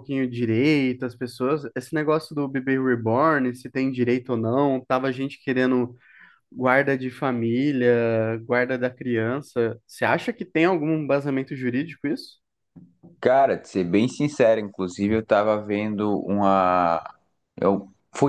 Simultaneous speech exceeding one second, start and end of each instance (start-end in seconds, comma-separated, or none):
none